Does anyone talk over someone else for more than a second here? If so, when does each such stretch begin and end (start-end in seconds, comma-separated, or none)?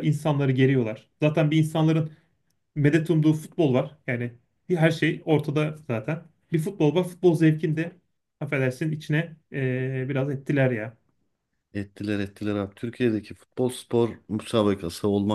none